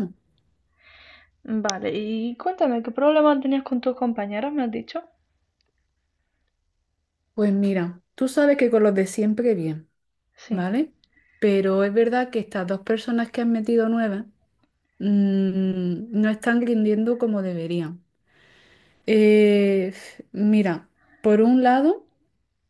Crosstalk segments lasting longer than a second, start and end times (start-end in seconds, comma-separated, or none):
none